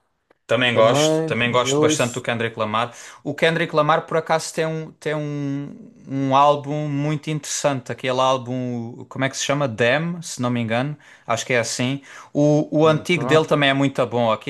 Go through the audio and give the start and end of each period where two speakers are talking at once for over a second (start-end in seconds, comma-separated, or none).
0.7-2.2